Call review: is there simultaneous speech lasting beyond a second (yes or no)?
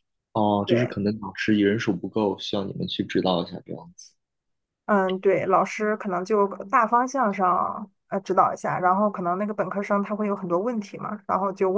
no